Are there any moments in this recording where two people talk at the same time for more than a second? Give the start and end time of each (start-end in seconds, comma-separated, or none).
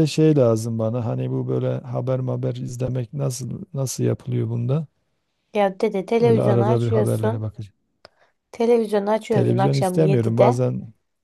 6.2-7.5, 9.3-10.6